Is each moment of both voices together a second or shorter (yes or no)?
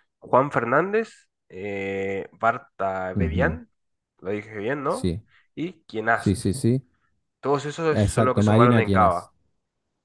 no